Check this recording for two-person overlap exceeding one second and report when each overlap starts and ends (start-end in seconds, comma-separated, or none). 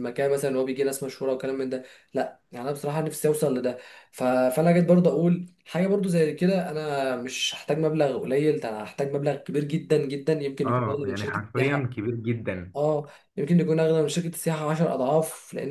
10.6-12.0